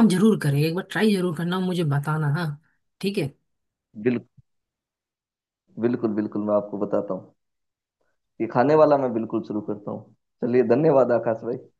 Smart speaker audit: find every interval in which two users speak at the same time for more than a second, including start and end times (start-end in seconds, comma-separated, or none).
none